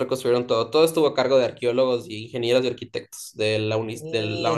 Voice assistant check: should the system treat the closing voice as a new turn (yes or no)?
yes